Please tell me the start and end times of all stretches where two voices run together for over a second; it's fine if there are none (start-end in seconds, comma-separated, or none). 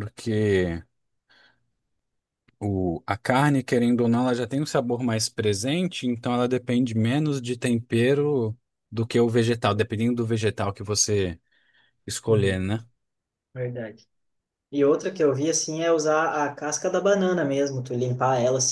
none